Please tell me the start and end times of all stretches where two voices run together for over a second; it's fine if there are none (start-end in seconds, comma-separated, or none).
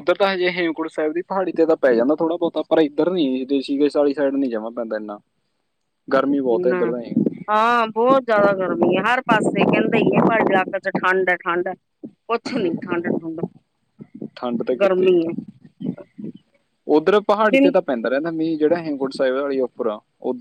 none